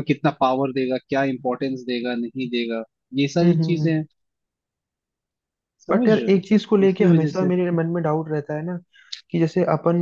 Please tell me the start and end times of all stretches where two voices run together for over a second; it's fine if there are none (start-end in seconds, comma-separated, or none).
5.9-7.5